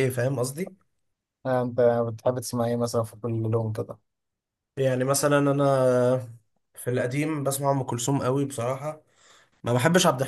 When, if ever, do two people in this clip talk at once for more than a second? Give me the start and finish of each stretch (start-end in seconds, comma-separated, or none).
none